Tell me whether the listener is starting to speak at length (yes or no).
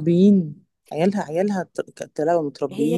yes